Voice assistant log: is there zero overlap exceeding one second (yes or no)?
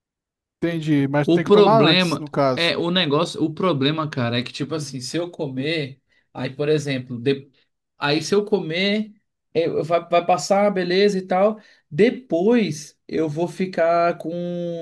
no